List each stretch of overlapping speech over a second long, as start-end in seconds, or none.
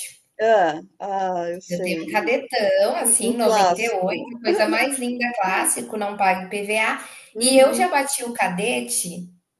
3.0-4.2